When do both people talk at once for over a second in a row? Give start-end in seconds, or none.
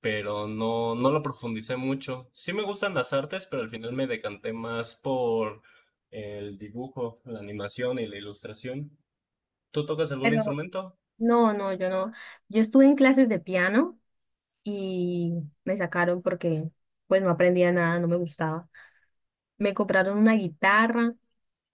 none